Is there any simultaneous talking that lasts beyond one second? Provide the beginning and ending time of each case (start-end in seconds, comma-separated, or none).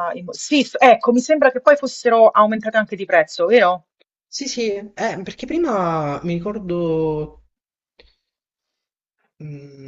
none